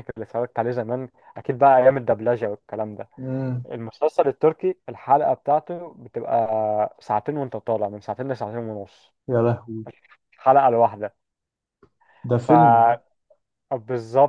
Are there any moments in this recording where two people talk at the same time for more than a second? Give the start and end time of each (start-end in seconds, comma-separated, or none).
none